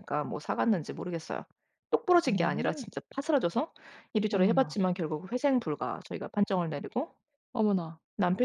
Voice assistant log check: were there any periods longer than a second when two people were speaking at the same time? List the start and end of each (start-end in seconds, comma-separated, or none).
none